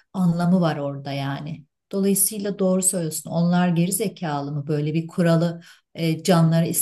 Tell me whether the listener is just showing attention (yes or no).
yes